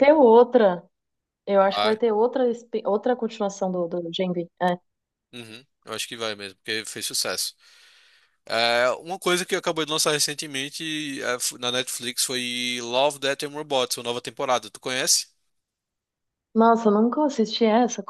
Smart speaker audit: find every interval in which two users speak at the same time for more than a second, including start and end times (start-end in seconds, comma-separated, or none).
none